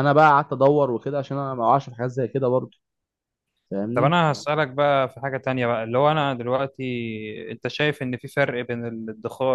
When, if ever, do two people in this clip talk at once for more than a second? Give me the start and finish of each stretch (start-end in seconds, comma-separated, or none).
none